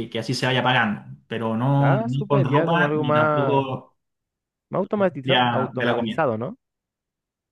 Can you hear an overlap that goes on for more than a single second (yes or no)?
yes